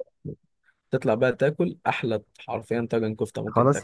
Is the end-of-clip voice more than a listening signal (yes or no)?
yes